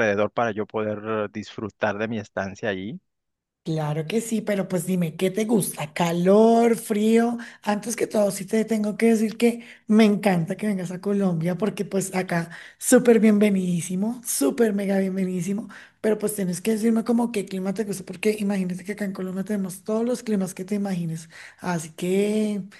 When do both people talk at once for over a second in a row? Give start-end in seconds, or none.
none